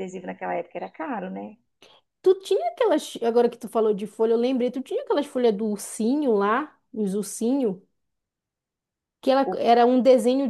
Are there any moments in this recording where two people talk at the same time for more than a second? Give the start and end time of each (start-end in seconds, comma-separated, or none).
none